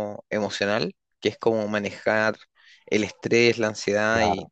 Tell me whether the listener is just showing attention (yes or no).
yes